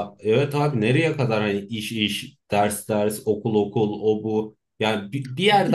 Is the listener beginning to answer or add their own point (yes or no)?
no